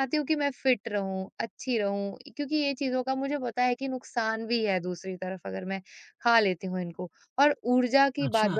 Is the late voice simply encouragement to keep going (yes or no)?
yes